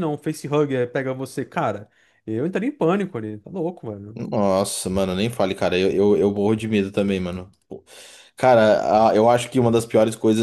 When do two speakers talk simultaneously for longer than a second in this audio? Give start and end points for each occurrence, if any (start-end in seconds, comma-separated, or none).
none